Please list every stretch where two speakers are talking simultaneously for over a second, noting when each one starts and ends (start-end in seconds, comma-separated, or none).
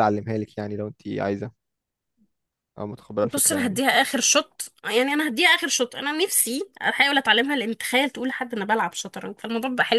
none